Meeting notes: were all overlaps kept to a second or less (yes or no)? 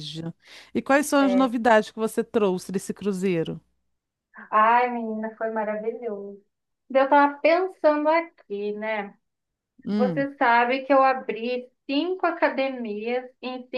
yes